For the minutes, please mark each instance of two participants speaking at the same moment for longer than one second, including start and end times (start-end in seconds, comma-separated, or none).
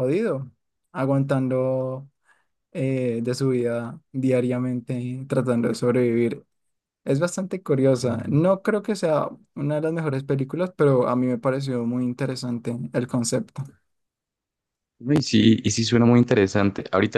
none